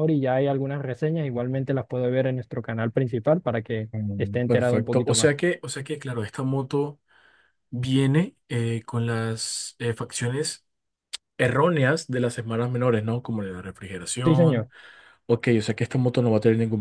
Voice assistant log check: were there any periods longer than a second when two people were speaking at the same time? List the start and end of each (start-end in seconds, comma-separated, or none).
3.9-5.3